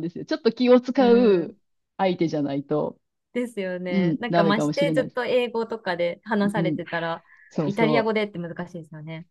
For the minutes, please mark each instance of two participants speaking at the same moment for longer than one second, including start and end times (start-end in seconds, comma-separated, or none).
3.9-5.2